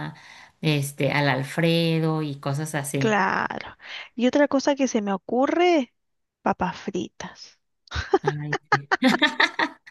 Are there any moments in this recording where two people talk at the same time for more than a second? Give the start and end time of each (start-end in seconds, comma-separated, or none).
none